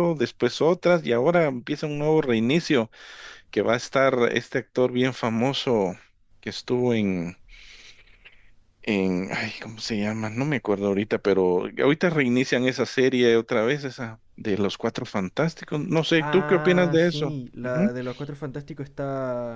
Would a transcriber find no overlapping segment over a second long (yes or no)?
no